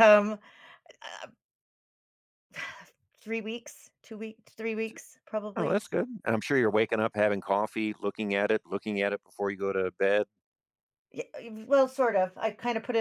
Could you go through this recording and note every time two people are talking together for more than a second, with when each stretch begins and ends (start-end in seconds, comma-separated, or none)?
none